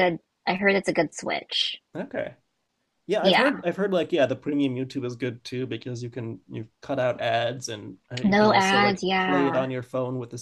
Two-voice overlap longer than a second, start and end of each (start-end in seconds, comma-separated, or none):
8.2-9.7